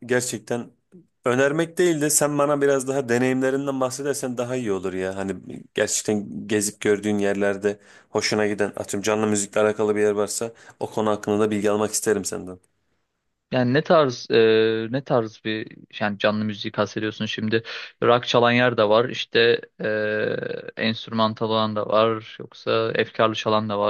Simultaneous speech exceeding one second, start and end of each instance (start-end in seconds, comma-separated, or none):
none